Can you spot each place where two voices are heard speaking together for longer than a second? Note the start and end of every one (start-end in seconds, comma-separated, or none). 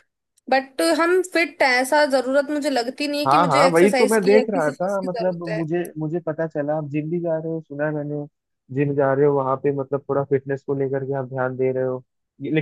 3.3-5.6